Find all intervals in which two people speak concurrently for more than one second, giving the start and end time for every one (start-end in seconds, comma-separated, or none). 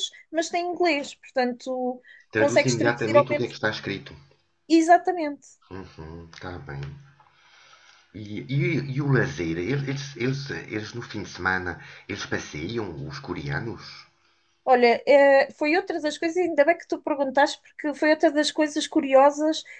2.4-3.5